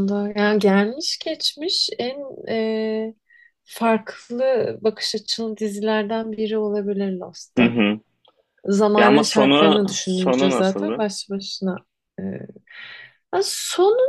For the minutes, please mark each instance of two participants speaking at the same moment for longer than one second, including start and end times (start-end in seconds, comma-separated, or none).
9.0-11.1